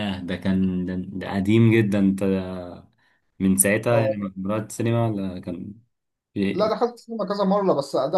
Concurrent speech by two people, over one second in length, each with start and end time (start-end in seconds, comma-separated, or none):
none